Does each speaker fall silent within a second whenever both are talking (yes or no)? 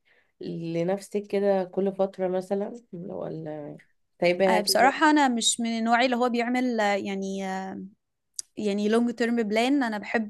yes